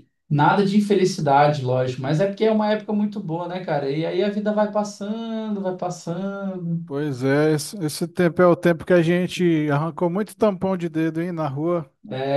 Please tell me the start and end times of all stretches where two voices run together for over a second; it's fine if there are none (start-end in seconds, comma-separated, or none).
none